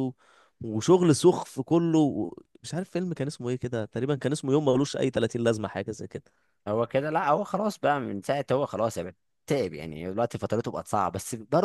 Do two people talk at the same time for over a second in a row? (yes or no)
no